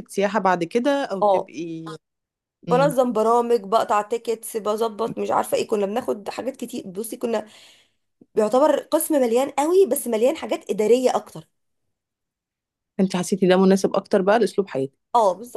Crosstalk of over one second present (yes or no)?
no